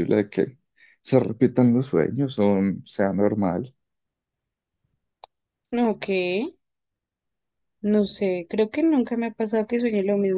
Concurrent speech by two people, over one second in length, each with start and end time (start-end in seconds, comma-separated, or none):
none